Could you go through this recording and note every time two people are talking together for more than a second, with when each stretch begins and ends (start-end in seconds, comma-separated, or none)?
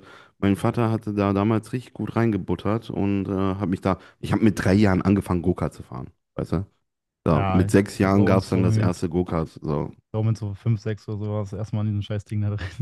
7.3-8.7